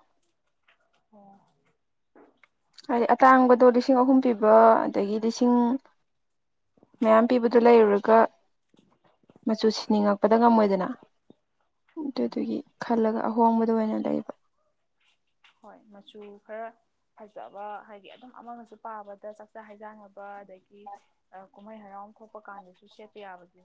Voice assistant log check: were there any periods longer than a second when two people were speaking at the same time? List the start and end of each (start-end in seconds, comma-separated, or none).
none